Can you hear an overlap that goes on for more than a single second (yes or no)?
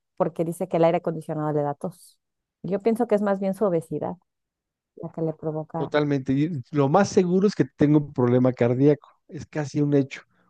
no